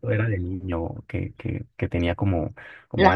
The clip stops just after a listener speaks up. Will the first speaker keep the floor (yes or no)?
yes